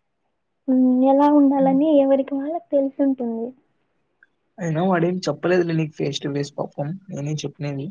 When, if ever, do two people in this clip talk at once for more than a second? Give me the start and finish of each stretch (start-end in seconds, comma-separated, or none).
none